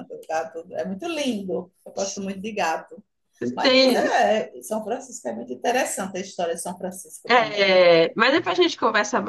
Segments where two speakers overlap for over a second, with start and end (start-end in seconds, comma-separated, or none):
none